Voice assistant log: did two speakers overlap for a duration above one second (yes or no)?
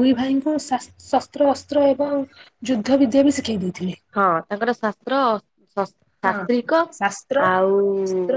no